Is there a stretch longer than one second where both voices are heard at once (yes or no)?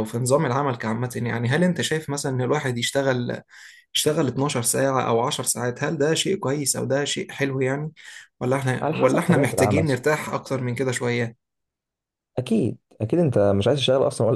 yes